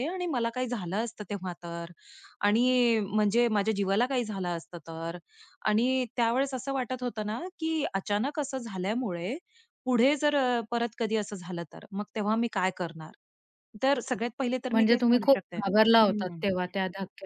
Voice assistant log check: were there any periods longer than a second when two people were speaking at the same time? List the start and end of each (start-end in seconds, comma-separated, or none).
14.7-16.4